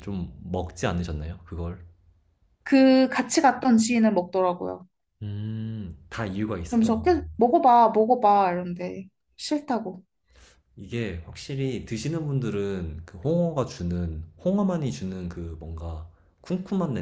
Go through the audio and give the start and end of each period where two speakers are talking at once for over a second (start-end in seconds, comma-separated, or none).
none